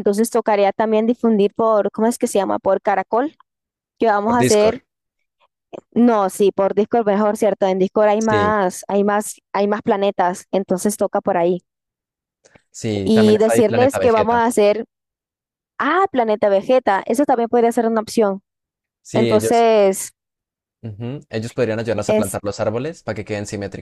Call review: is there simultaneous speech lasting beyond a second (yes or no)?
yes